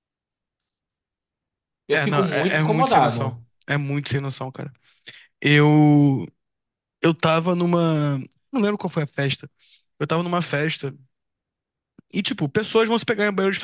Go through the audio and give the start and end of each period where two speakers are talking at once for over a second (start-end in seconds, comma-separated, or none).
1.9-3.4